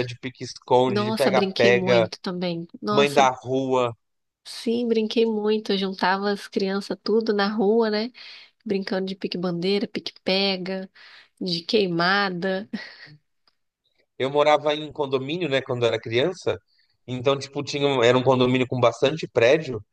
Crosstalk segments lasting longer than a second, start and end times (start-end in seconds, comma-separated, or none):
0.9-2.1